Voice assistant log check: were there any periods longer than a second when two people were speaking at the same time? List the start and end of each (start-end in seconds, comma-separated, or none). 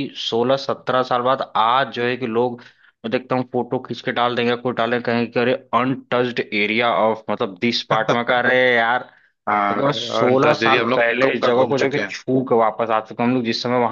9.5-12.2